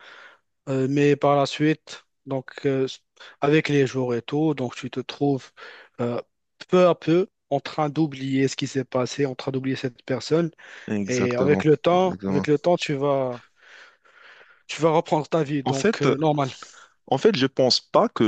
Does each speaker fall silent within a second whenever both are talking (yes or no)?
no